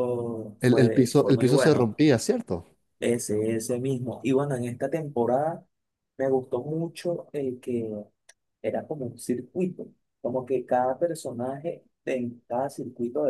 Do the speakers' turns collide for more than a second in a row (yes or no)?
yes